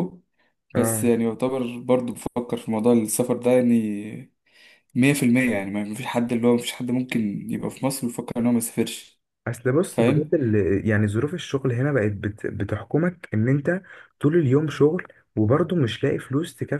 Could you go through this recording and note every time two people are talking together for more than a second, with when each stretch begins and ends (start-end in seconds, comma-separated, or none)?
none